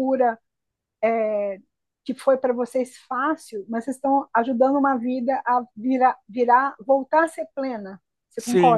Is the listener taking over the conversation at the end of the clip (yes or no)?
no